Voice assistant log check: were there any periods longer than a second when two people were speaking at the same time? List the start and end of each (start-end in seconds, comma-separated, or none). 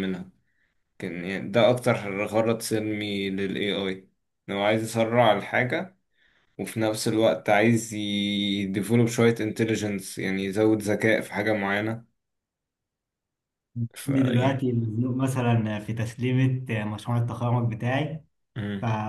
none